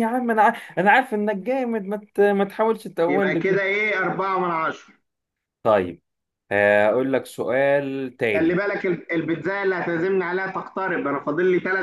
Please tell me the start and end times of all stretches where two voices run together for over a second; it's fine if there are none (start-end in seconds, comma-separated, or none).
none